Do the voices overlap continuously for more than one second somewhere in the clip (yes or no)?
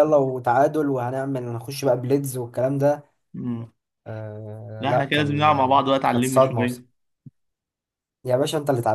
yes